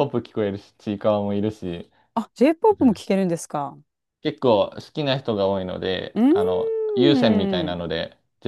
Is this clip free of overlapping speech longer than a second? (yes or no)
no